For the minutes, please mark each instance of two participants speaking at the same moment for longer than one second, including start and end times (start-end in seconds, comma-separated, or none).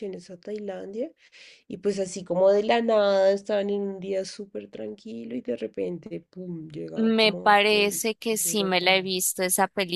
7.0-9.1